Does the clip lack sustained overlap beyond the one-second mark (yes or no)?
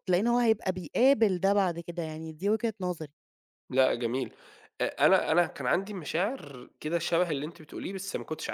yes